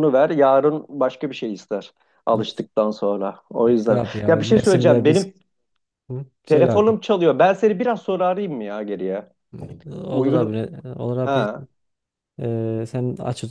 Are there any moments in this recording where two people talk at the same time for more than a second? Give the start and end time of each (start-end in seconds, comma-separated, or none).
3.6-5.3